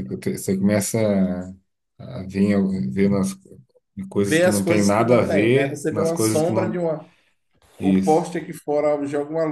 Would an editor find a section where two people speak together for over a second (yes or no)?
yes